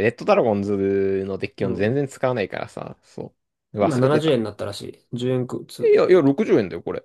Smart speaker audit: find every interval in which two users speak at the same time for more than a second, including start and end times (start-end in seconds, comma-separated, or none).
none